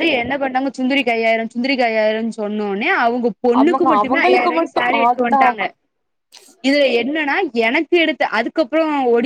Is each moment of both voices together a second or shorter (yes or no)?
no